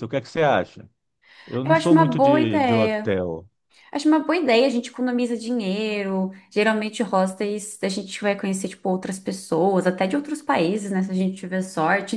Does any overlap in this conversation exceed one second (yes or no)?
yes